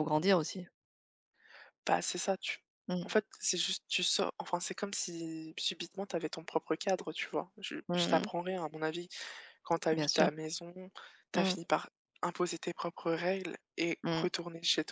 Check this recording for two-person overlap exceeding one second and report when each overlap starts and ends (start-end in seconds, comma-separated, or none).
none